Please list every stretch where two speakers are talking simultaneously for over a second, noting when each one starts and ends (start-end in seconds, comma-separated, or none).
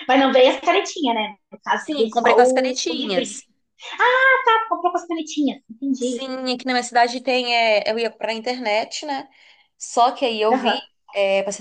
1.9-3.4